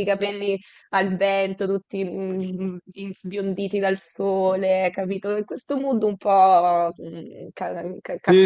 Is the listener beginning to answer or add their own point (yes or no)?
yes